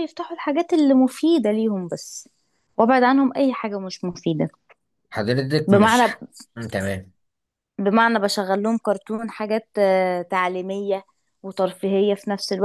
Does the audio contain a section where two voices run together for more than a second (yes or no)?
no